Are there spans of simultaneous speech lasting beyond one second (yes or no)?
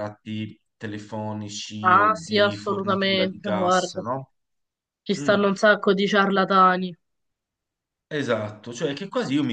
yes